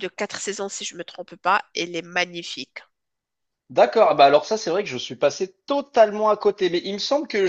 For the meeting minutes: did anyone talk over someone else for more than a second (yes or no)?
no